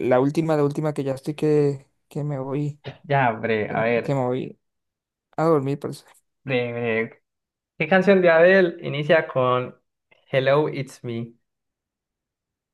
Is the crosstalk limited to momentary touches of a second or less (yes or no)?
yes